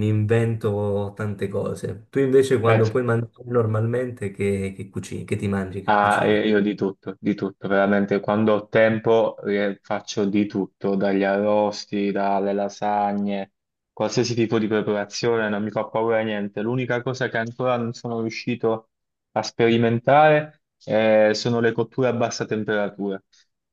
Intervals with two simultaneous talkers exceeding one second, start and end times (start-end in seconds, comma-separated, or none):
none